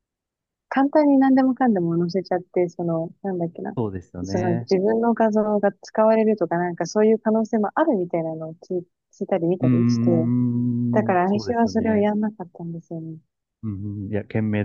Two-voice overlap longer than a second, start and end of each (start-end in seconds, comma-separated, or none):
10.9-12.1